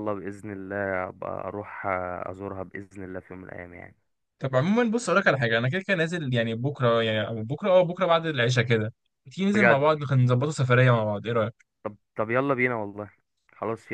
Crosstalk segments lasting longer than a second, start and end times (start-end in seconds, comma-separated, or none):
none